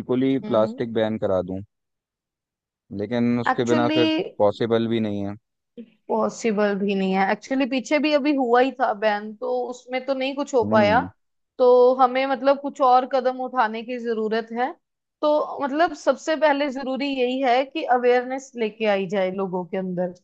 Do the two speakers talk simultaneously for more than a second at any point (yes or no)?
no